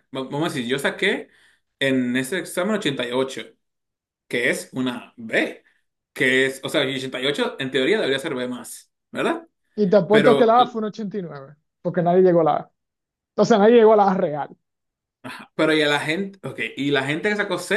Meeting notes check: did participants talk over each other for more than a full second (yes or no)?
no